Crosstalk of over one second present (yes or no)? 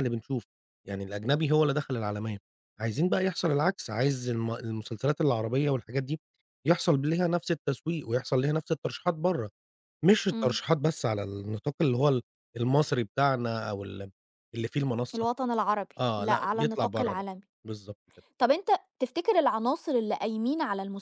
yes